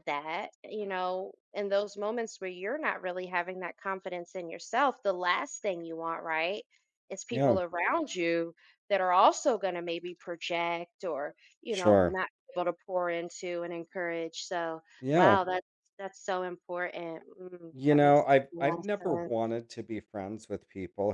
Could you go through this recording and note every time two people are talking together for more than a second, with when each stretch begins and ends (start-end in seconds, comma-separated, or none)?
17.7-19.5